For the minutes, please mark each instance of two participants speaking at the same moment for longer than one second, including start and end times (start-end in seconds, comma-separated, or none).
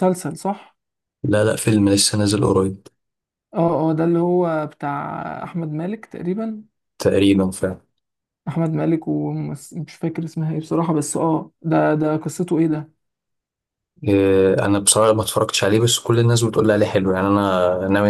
none